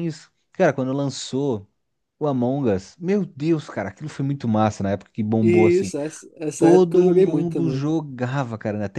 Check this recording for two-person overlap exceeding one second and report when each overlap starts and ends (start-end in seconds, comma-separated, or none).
6.6-7.9